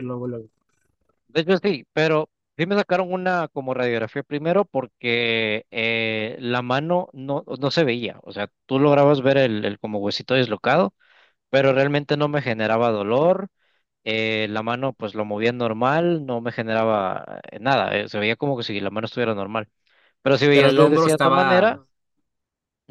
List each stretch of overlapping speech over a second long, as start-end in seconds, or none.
20.5-21.7